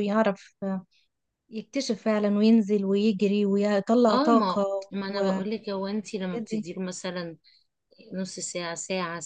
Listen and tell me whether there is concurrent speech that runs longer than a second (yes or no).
yes